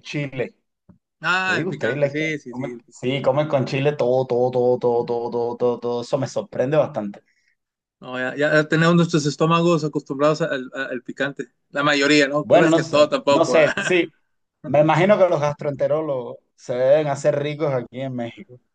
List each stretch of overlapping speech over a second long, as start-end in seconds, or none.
1.4-3.1, 12.4-14.0